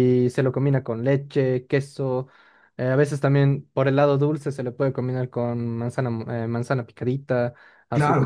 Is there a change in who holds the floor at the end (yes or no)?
yes